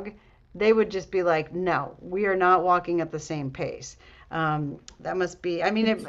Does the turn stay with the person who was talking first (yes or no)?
yes